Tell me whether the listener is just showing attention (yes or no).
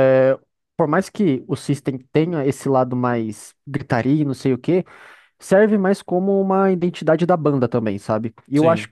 yes